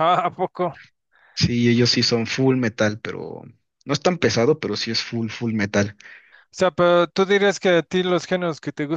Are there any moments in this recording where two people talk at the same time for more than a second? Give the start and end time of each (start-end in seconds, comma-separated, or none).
none